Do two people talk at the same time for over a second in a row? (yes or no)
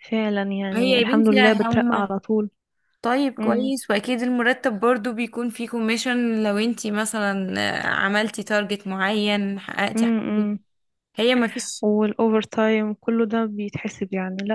yes